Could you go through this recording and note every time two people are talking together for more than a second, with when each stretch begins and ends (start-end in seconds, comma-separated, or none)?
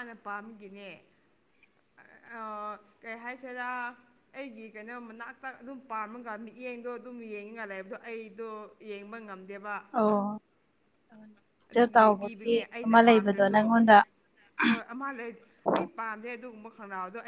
11.7-13.6